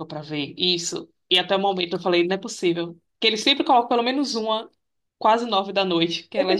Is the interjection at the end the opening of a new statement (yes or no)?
yes